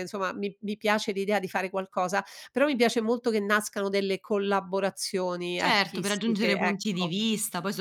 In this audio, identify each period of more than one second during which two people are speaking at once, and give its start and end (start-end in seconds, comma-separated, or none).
5.6-7.1